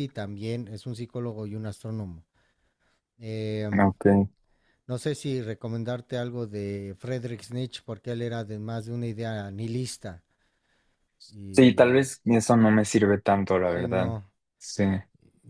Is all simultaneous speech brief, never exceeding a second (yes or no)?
yes